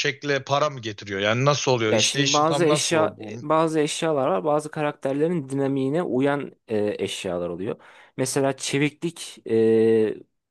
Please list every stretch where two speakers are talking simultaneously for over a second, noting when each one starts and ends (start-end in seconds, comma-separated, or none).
1.9-3.5